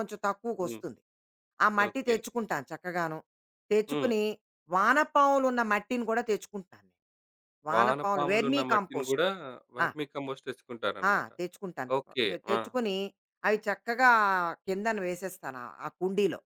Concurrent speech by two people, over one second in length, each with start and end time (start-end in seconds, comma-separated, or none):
7.7-9.2